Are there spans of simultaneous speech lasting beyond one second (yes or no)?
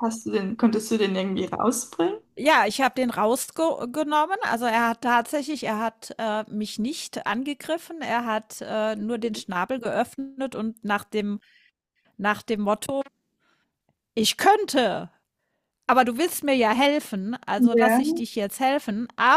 no